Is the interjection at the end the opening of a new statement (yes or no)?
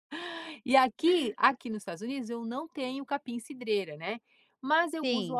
no